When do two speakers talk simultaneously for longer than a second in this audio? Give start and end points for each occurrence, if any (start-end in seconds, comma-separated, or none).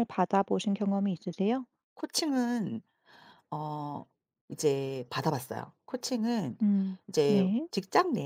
none